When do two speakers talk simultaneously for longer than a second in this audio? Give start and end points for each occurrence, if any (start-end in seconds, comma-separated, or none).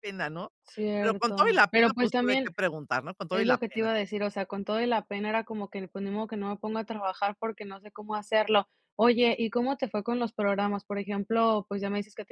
1.0-2.5